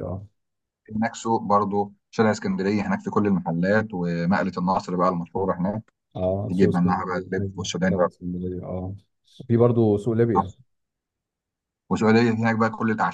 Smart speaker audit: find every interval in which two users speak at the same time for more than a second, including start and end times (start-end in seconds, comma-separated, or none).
6.5-8.1